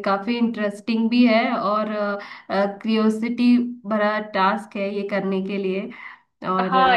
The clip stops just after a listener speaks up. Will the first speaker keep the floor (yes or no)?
no